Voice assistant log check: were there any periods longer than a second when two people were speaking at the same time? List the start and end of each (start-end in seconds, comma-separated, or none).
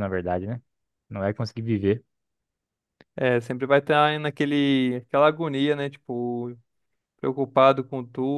none